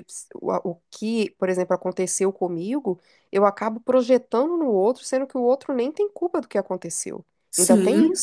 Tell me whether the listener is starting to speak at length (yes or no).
yes